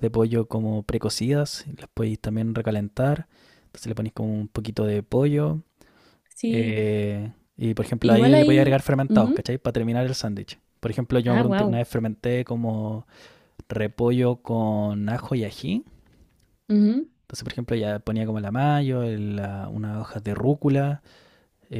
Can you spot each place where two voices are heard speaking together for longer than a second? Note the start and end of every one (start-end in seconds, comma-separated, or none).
8.0-9.4